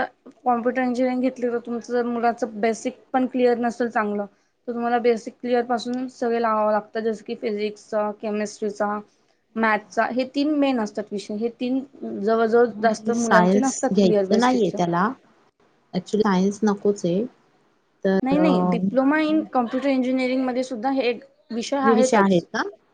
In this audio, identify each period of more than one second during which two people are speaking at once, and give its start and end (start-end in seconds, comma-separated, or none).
12.8-14.8